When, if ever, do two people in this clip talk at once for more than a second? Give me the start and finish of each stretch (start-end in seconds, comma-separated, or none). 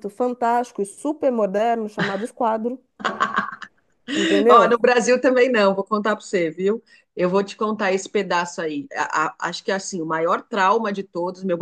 none